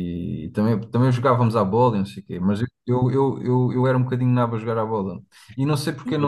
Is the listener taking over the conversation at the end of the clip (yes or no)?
no